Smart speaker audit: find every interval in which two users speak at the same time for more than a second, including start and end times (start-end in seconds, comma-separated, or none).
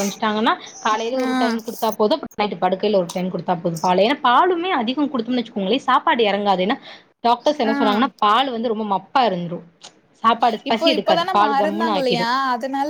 10.7-12.2